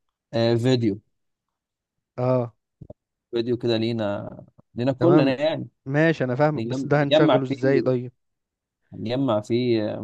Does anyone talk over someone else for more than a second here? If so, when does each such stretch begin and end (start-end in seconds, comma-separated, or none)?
6.5-8.0